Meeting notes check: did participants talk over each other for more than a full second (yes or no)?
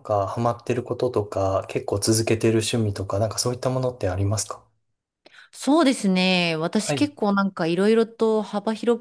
no